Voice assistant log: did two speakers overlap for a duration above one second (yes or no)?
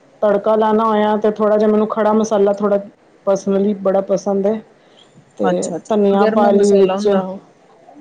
yes